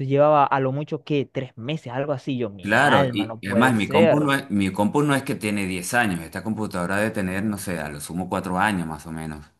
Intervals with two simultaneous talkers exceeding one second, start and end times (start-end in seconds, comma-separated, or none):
2.6-4.3